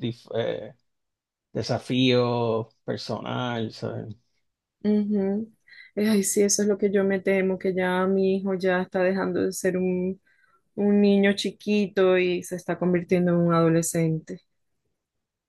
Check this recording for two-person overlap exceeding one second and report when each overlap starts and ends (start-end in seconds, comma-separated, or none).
none